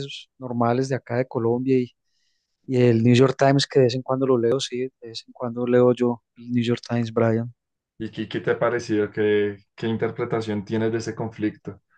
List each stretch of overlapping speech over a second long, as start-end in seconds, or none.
none